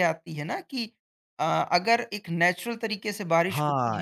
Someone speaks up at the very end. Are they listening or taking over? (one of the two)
taking over